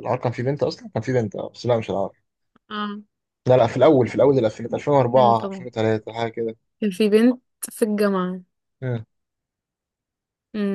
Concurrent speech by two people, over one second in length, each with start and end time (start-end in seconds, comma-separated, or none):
none